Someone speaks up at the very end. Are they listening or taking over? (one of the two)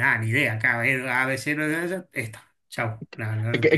taking over